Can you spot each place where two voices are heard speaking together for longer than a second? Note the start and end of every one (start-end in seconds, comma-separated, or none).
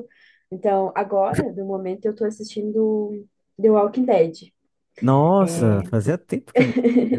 none